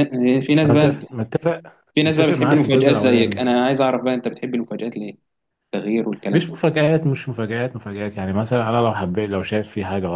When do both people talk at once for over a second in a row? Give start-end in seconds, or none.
2.0-3.4